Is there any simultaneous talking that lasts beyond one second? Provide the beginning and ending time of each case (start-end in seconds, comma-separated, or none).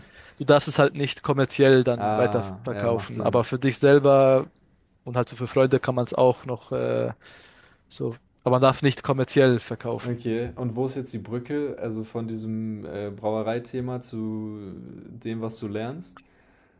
1.9-3.5